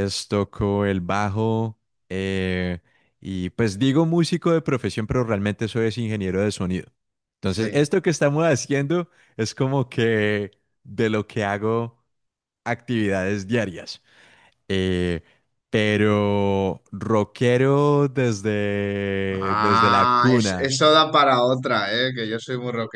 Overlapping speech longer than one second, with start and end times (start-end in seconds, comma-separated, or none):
19.3-20.7